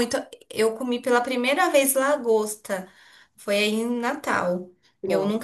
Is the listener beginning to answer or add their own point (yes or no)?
no